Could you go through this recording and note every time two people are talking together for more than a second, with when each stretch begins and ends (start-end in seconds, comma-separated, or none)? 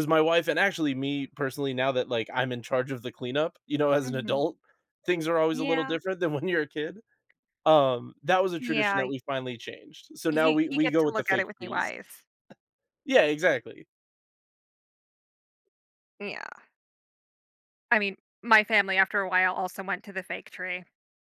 10.3-11.9